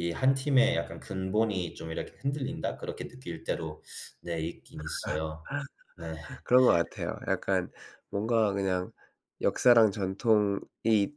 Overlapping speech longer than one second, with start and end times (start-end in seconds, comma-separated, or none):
none